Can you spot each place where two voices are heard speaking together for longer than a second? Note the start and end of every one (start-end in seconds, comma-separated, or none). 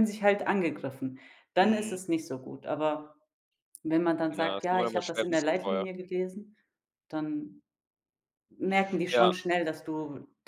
4.3-5.8